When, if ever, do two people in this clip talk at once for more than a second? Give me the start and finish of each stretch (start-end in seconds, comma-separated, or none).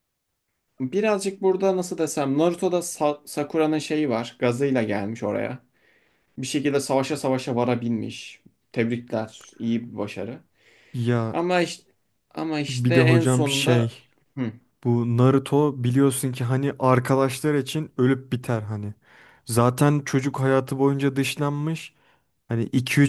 12.7-13.9